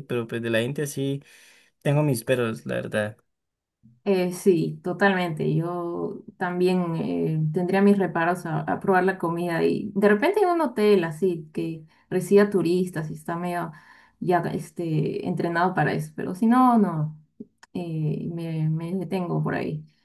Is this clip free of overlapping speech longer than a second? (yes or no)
yes